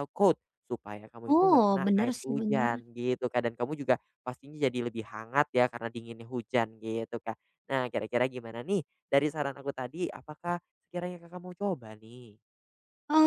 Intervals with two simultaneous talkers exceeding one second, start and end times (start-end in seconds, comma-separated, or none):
1.3-2.7